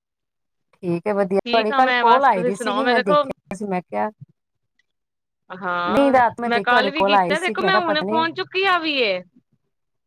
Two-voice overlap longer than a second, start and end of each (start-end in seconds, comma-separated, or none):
1.4-3.2, 5.9-8.2